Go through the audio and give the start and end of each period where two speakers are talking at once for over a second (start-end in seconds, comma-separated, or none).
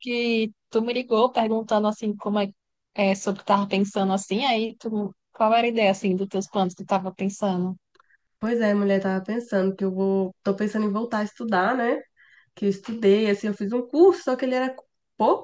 none